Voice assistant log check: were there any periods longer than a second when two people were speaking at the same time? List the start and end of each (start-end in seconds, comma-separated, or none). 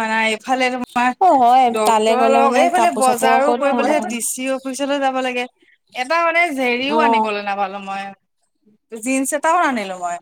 1.8-4.1